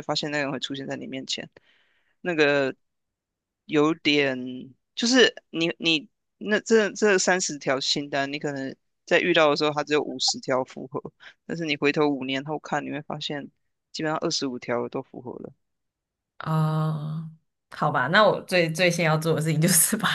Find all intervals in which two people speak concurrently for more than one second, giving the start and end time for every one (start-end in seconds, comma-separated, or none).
none